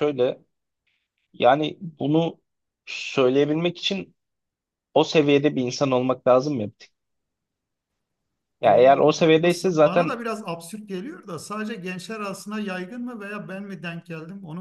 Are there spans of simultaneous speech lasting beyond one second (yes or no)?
yes